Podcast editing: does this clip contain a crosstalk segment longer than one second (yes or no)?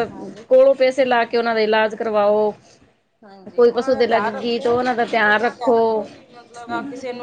yes